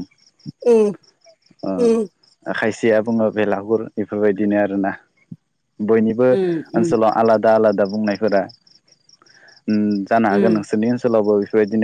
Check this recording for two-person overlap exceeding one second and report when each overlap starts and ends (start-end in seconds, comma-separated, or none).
none